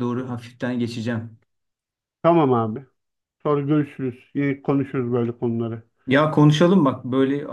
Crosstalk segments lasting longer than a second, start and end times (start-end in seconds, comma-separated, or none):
none